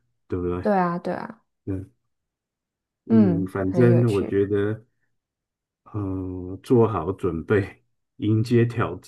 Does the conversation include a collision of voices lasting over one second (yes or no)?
yes